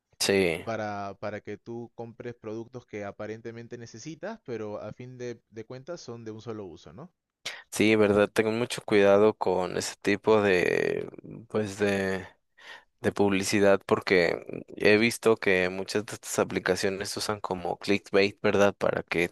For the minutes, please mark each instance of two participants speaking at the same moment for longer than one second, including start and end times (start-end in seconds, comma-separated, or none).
none